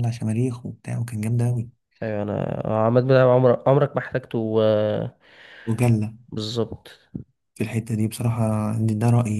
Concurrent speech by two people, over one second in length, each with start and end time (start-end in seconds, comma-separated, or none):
none